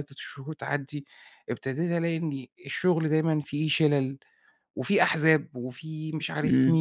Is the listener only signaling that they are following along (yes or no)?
no